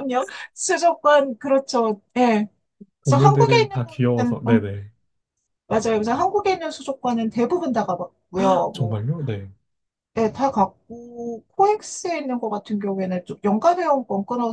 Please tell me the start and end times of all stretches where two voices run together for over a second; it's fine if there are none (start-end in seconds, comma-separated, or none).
3.0-4.7